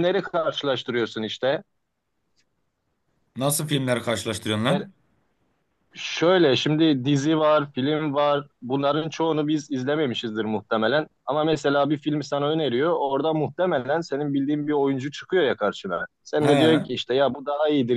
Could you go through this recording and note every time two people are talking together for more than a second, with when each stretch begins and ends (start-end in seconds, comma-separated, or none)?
none